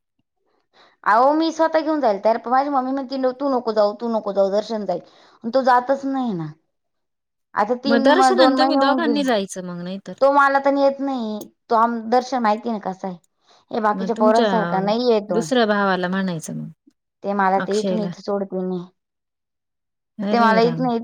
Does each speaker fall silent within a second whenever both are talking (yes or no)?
yes